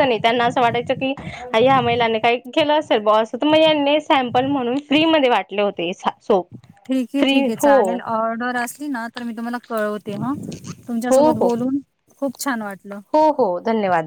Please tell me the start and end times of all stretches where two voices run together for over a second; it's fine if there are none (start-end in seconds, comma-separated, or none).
none